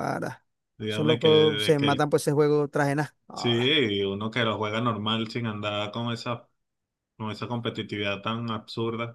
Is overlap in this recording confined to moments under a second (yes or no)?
no